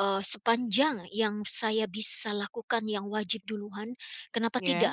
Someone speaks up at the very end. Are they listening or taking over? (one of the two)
listening